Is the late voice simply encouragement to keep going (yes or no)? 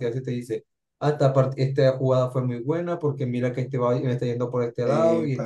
yes